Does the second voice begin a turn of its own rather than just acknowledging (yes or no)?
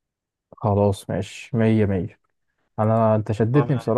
no